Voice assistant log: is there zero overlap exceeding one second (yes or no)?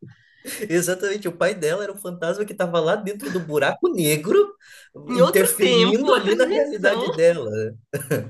no